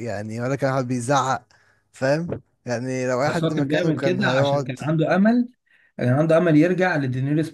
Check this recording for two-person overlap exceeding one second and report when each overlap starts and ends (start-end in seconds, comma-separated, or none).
3.2-4.8